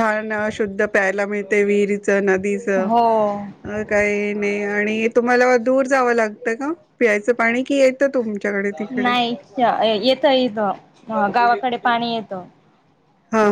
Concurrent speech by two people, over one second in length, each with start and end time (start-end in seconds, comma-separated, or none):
none